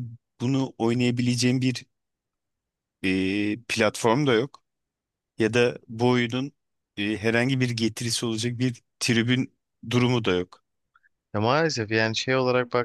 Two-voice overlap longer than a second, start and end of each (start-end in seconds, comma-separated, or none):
none